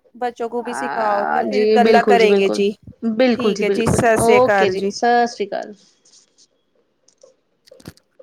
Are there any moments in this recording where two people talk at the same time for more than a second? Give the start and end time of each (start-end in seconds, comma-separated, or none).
0.6-2.6, 3.3-4.9